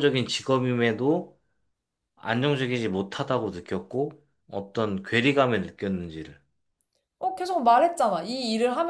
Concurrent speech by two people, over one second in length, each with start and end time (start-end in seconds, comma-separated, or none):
none